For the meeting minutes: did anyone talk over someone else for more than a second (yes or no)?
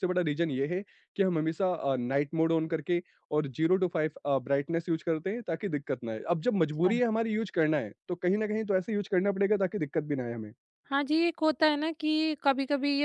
no